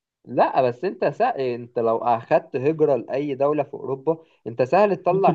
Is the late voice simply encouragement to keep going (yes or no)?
no